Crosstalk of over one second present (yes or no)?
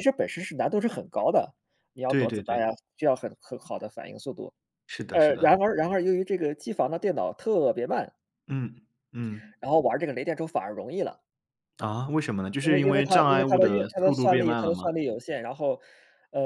yes